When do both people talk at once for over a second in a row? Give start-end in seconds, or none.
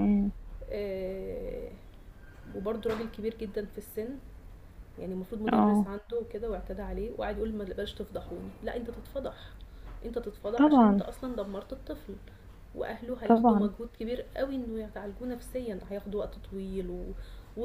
none